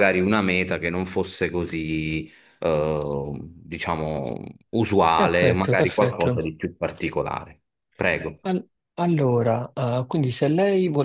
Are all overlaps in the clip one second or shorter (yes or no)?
no